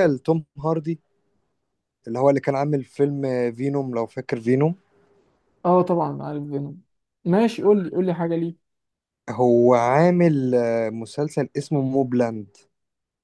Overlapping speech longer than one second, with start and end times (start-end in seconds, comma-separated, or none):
none